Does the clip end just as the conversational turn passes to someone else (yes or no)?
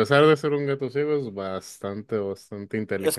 yes